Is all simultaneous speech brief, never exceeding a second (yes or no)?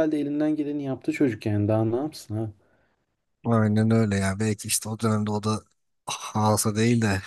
yes